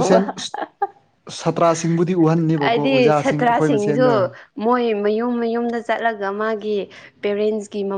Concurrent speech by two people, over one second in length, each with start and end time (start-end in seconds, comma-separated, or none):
2.6-4.2